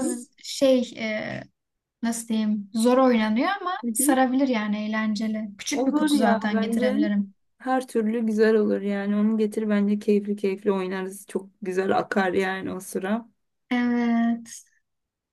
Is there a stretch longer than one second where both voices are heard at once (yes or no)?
yes